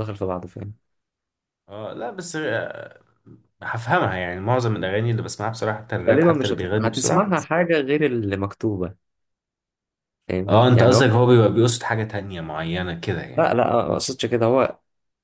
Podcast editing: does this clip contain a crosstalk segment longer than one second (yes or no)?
yes